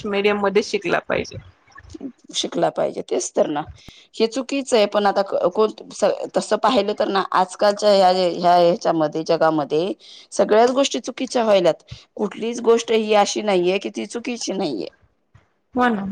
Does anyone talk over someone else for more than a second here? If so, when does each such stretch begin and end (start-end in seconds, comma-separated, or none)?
none